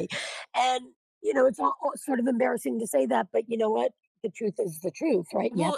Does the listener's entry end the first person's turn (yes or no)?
yes